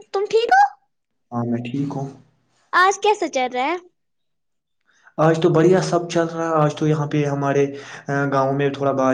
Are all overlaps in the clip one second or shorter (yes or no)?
yes